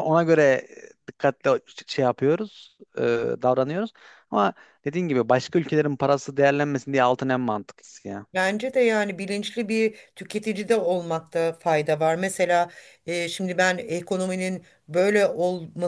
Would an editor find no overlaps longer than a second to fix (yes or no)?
yes